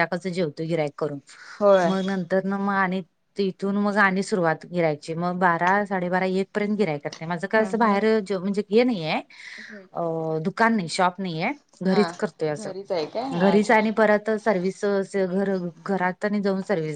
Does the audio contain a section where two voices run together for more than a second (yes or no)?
no